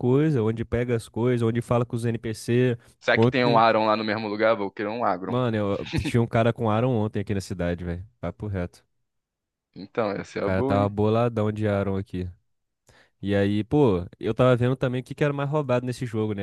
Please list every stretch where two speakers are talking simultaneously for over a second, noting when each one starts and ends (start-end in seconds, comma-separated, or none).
none